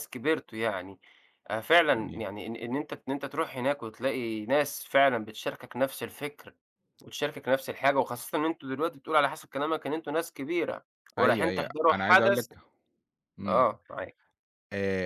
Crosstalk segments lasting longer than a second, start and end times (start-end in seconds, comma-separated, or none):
11.2-12.5